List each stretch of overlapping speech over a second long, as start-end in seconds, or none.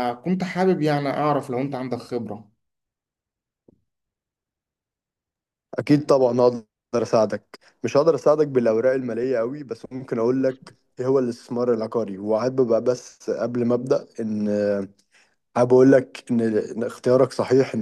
none